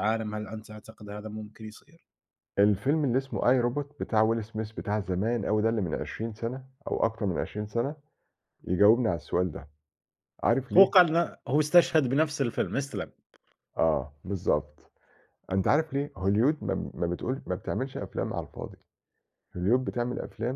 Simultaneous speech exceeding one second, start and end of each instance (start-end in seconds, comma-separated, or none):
none